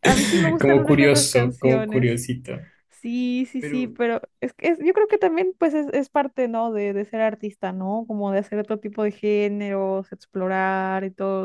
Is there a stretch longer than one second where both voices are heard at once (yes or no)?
yes